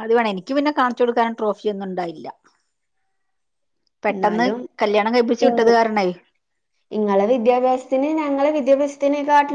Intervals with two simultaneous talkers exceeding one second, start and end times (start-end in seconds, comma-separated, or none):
none